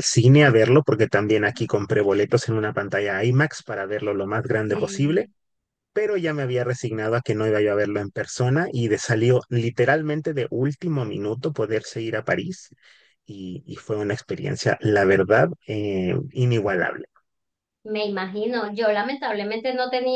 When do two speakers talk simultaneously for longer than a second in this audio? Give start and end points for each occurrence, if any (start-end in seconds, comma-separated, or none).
none